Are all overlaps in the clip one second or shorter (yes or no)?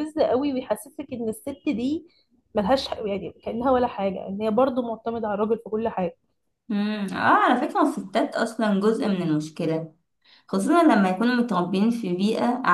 yes